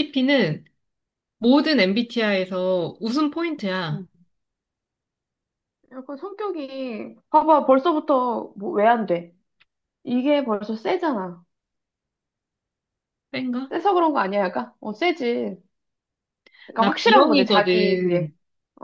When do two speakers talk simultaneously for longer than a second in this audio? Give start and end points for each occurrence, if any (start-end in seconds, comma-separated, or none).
16.8-18.3